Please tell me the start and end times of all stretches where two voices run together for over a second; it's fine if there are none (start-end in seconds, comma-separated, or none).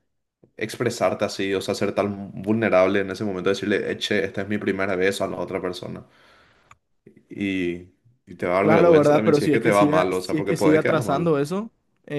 8.6-11.3